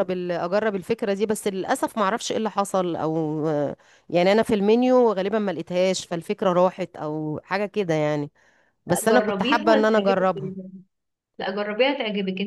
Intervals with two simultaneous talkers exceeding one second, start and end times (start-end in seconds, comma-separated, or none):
8.9-10.5